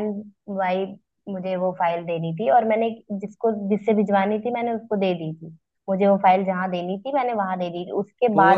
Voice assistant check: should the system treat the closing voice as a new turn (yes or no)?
yes